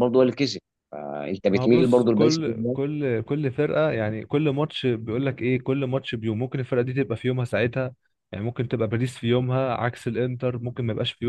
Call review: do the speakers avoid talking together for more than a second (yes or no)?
no